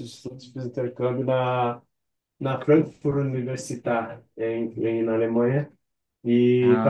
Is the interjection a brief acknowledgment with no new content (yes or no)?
yes